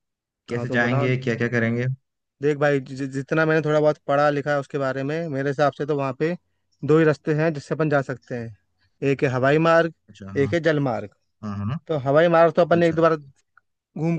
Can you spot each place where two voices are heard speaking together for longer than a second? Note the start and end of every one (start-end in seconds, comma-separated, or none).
none